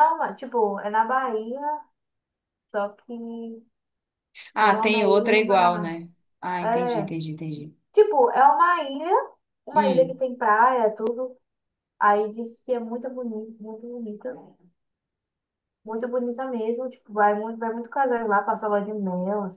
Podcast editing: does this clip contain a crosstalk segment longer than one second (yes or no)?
yes